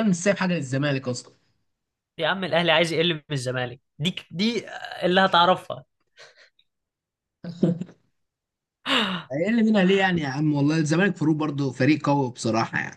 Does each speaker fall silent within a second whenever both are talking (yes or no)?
yes